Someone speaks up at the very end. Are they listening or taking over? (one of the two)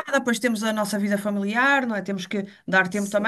listening